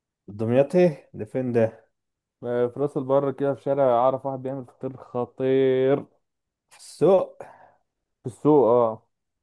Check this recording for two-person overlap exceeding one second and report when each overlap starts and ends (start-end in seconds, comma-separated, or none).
none